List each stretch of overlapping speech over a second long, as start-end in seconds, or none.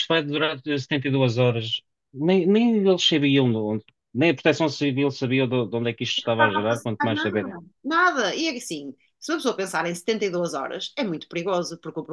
6.2-7.5